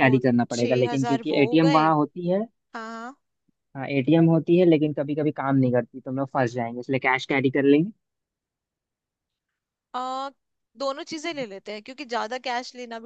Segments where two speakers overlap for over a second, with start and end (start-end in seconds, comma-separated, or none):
0.5-1.9